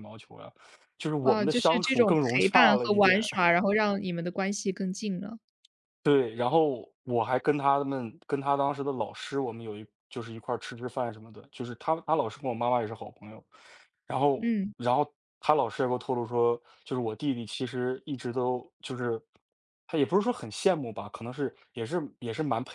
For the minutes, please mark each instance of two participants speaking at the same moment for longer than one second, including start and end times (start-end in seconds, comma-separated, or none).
1.2-3.3